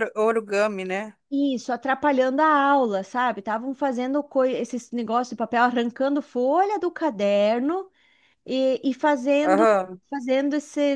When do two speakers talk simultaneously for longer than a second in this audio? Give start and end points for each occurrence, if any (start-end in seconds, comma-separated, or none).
none